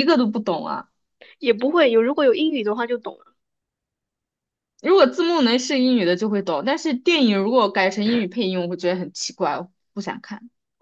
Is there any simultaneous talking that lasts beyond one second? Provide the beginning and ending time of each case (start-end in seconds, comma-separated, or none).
none